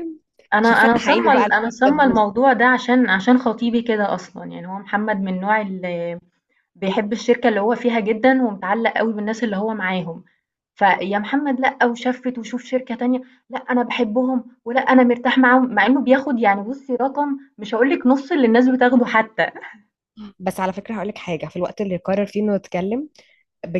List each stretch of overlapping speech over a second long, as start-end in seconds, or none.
0.6-2.2